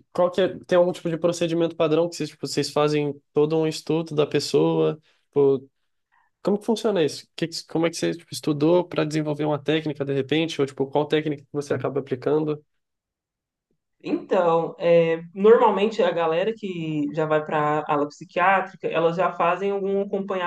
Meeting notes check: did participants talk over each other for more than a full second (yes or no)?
no